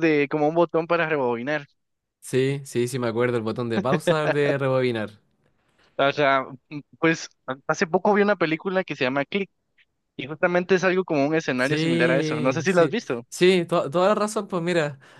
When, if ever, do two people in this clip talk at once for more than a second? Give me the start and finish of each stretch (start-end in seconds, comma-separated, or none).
11.6-13.2